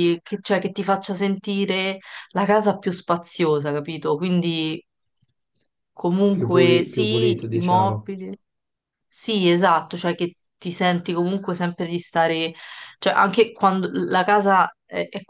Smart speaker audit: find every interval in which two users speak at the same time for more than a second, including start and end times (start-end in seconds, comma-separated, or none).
6.3-8.1